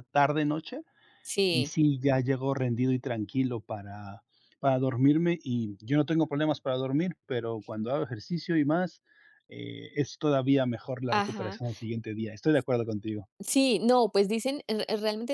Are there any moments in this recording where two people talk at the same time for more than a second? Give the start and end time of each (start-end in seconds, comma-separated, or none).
none